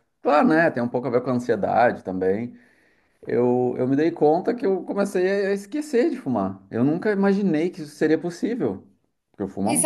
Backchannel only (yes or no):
no